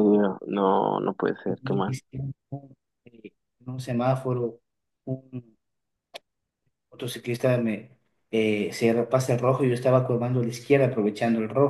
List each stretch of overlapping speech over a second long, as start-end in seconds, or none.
none